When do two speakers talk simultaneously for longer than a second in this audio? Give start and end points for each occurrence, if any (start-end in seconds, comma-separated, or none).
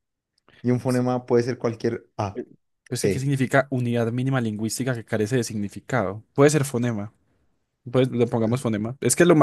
none